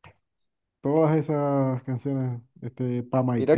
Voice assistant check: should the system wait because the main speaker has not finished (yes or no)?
no